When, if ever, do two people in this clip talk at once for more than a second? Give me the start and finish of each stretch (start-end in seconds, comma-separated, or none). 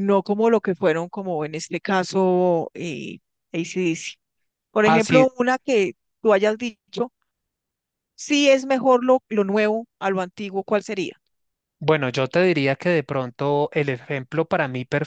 none